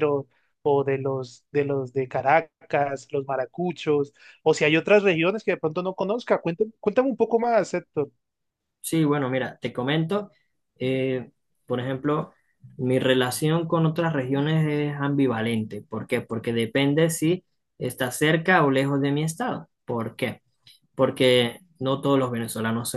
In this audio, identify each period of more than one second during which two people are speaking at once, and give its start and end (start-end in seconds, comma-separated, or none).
none